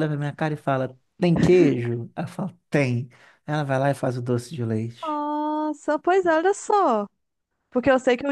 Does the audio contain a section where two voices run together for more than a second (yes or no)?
no